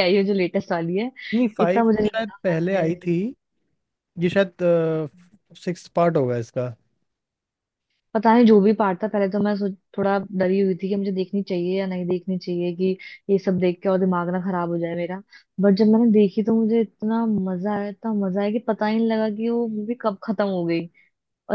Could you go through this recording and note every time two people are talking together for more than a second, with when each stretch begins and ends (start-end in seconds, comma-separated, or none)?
1.6-3.1